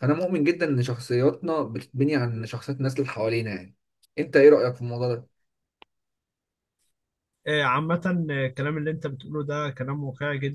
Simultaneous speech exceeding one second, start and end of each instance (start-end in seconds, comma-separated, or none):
none